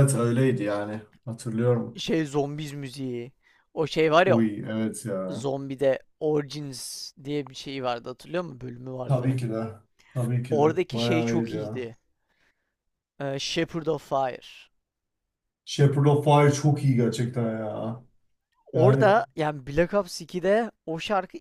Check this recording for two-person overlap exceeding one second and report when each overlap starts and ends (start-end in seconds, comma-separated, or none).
10.5-11.9